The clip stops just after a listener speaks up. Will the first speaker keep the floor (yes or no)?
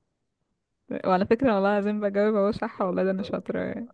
no